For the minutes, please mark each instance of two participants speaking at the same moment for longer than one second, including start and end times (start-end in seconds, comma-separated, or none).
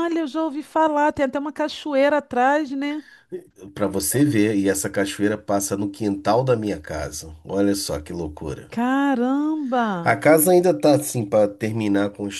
none